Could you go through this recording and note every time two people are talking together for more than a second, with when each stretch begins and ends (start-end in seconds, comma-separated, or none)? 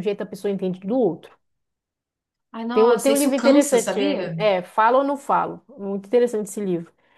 2.7-4.0